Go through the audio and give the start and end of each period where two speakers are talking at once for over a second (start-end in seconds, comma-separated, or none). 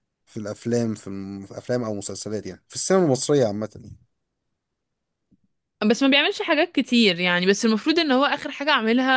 none